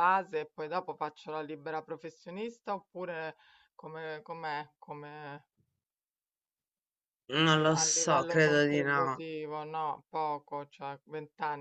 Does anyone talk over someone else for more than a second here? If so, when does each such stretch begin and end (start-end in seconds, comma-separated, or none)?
7.5-9.2